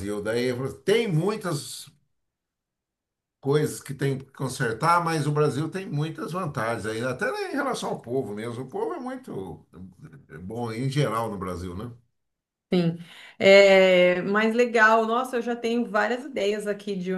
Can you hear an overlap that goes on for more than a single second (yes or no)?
no